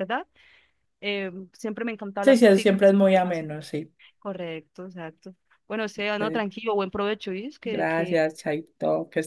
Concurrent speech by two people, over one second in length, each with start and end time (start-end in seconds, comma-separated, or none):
2.2-3.4